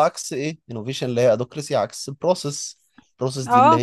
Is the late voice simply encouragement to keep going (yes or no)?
no